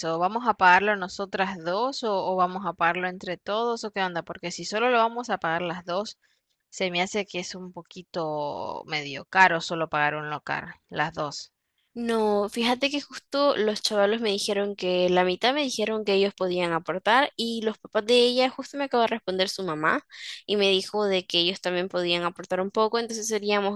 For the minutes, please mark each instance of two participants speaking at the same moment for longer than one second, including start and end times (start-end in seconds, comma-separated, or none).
none